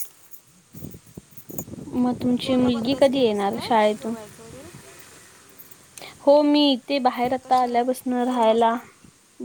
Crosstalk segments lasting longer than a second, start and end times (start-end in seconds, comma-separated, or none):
2.4-4.1